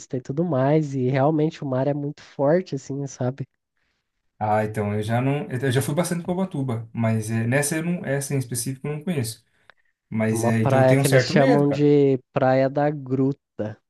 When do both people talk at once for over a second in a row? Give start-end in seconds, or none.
10.3-11.9